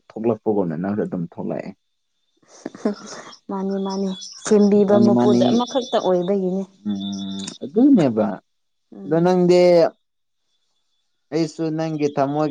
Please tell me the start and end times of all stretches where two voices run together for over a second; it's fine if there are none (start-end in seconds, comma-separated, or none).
none